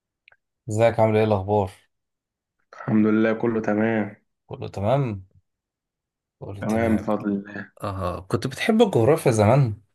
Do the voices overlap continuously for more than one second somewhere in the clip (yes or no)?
no